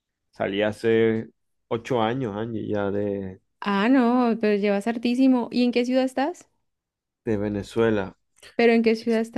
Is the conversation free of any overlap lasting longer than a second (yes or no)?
yes